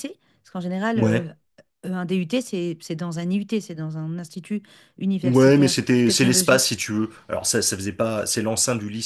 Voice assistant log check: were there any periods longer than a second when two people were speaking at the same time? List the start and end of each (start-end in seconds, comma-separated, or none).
5.2-6.8